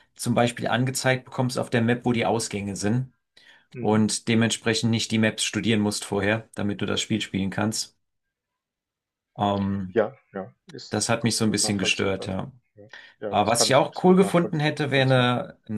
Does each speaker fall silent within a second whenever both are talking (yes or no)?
no